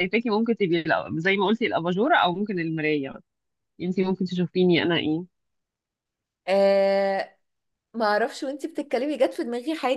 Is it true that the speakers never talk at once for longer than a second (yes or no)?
yes